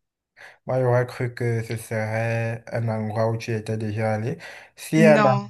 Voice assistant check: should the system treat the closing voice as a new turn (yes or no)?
no